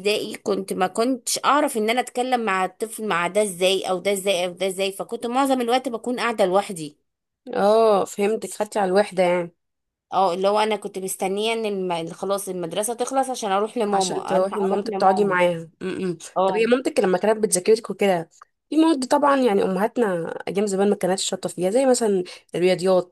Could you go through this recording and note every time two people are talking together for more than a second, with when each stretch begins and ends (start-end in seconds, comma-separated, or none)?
13.9-15.4